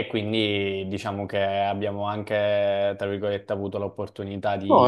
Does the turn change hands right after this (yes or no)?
no